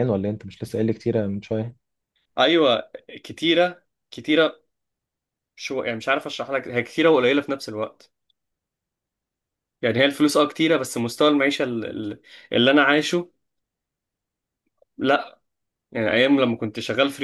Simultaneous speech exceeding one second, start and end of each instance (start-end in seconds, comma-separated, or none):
none